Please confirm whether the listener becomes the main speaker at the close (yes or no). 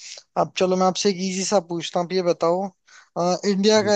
no